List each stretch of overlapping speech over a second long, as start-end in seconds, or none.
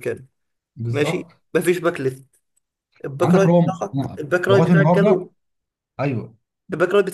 3.2-5.3